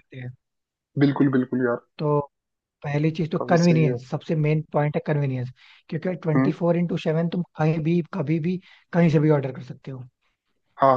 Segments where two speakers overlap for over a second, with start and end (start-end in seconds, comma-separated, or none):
none